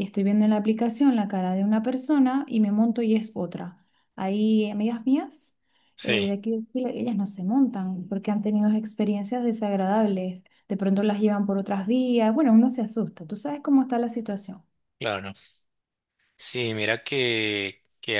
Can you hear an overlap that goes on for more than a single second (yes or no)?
no